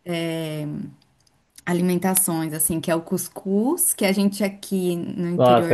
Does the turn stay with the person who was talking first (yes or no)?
no